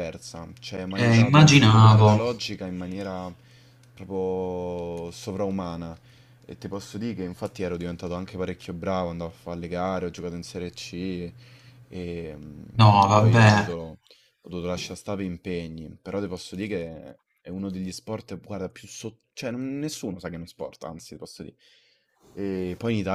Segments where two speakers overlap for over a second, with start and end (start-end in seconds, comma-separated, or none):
0.9-2.2